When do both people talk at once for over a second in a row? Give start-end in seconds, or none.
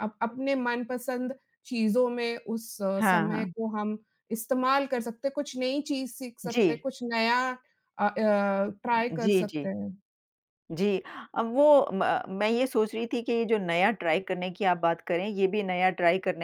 none